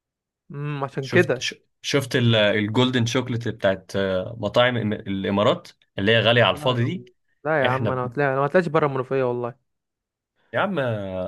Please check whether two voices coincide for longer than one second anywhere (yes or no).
no